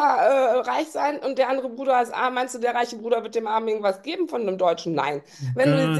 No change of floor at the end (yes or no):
yes